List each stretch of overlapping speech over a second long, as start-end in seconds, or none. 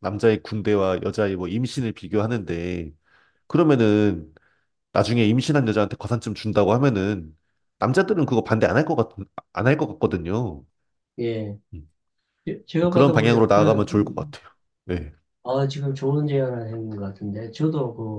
12.8-14.3